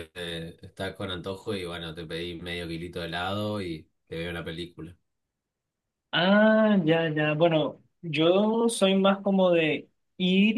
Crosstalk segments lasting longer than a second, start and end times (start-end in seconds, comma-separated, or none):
none